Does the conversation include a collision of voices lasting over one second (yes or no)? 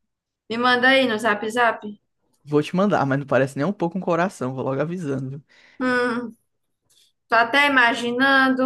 no